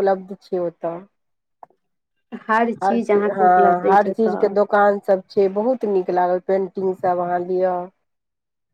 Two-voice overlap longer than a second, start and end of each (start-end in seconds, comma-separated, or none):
2.8-4.5